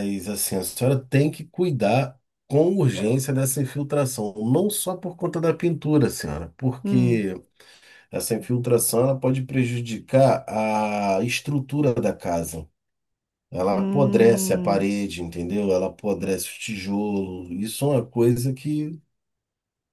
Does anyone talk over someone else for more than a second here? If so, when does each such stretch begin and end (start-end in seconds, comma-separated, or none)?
13.7-14.9